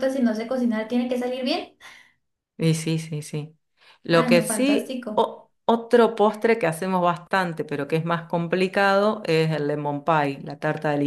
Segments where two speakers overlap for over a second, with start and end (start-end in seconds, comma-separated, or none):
4.1-5.3